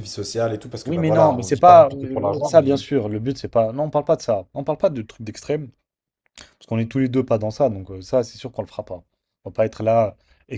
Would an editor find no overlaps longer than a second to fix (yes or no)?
no